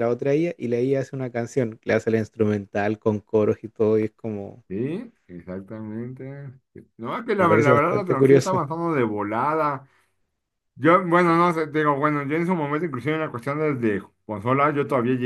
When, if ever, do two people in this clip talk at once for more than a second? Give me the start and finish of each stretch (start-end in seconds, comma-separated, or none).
7.4-8.6